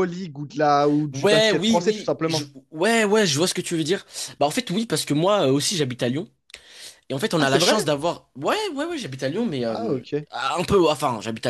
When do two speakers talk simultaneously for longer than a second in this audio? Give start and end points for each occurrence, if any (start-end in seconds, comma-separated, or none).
1.1-2.5